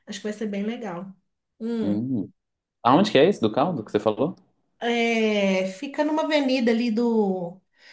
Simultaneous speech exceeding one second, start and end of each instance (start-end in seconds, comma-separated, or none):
none